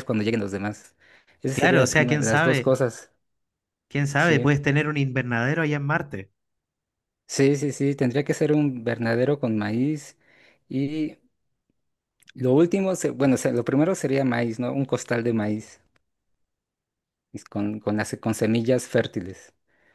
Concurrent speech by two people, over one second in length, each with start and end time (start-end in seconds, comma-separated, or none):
1.5-2.8